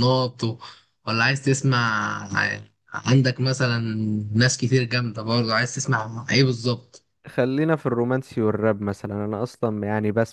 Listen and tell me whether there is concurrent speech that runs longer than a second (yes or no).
no